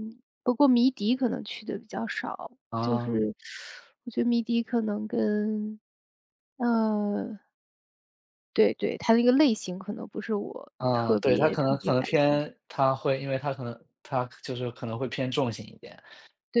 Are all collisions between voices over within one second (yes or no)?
no